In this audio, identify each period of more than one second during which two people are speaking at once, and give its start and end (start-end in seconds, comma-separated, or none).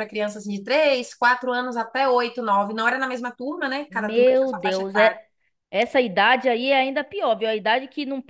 3.9-5.2